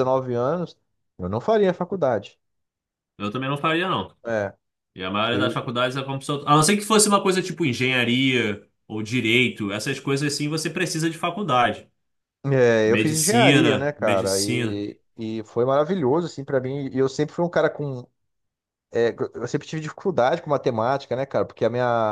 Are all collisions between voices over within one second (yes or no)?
no